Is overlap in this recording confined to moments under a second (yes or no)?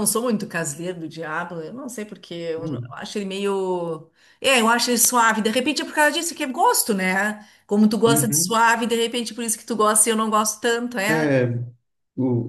yes